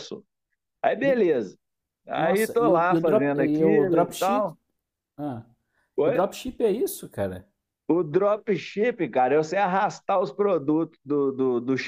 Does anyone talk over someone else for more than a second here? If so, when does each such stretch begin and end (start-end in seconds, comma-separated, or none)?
2.2-4.5